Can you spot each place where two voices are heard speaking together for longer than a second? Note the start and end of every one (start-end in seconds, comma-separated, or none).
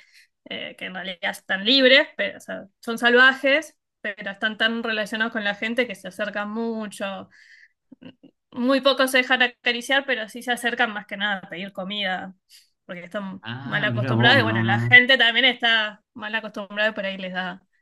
13.4-15.0